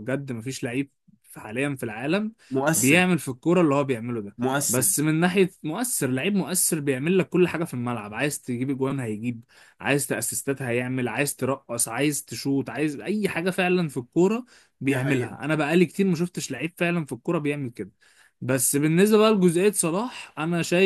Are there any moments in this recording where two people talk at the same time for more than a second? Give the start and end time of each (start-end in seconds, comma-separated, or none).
none